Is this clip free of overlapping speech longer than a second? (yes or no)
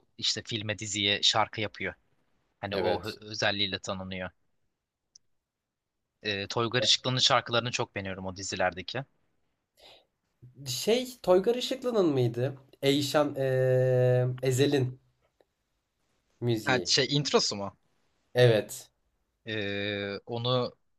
yes